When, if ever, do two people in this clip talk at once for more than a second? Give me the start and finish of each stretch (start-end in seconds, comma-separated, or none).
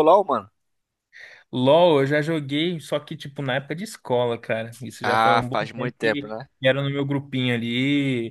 5.0-6.5